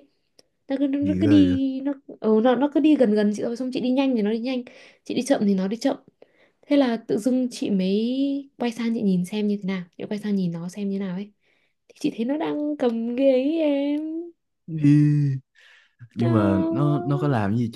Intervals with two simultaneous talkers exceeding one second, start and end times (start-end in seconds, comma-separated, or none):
none